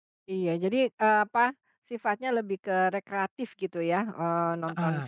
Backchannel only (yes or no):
yes